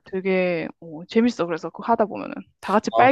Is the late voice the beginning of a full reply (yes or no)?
yes